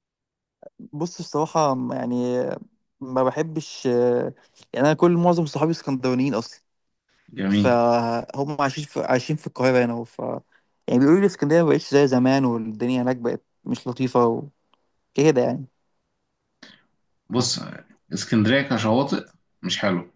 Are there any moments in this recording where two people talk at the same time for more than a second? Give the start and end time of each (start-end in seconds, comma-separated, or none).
none